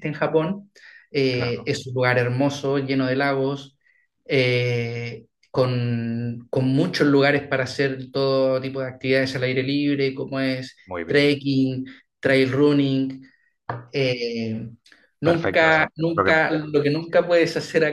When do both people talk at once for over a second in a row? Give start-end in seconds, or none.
15.2-16.7